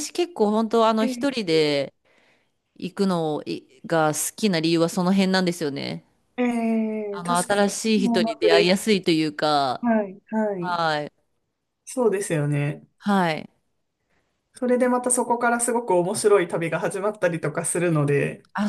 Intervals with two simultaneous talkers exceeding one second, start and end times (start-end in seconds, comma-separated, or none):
7.1-8.8